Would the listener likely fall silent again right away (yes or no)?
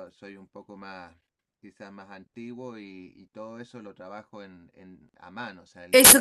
no